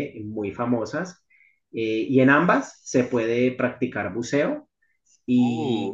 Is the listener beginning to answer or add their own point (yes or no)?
no